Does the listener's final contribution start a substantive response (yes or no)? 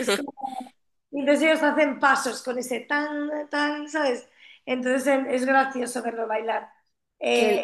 no